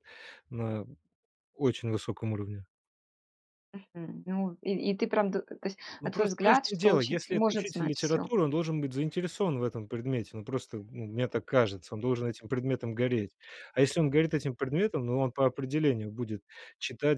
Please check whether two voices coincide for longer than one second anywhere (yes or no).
yes